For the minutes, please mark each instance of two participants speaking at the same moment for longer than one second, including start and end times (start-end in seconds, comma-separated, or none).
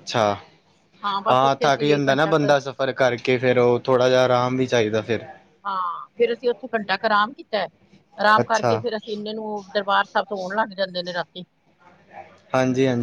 1.3-2.5